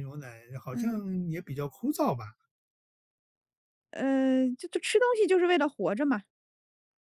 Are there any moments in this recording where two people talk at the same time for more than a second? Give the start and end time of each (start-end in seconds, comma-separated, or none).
none